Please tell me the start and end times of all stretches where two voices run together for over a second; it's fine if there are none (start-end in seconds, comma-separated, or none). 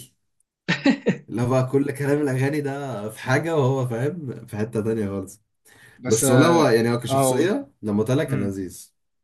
6.1-7.5